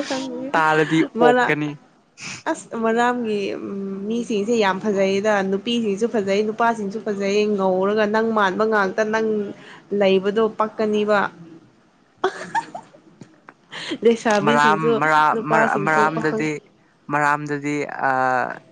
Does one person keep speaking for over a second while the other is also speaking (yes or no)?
yes